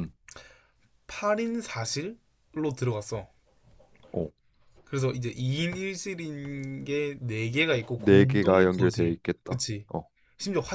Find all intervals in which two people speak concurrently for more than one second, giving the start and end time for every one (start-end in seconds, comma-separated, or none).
8.0-9.9